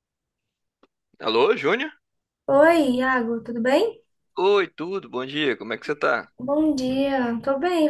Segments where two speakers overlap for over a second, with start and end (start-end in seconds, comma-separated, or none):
none